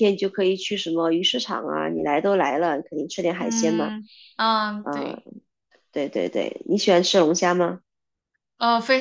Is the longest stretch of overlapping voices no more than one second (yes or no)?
yes